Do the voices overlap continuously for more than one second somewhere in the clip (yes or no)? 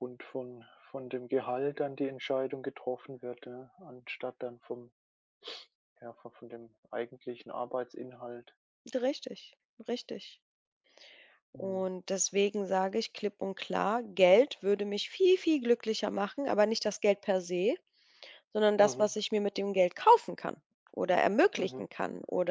no